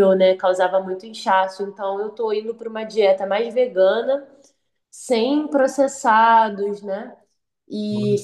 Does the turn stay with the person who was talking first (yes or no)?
yes